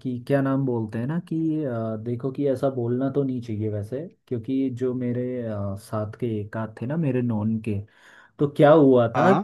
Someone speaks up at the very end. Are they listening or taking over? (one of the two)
listening